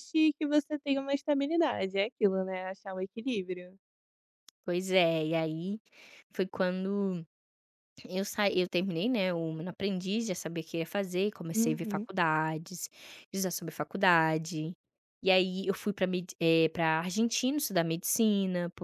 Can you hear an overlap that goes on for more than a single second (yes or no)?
no